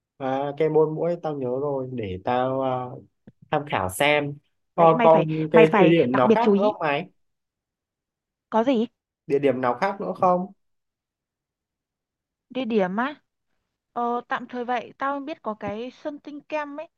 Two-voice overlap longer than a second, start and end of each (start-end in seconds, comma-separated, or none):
4.8-6.7